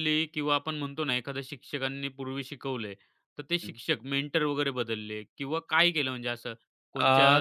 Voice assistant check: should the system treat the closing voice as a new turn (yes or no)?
no